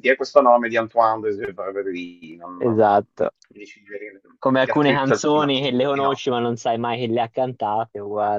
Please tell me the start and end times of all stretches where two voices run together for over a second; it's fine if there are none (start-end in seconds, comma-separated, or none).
4.6-6.2